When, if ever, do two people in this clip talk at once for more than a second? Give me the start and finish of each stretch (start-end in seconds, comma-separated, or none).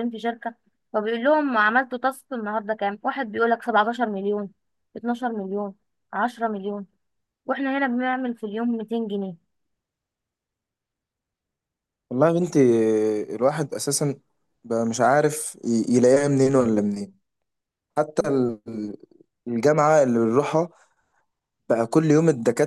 none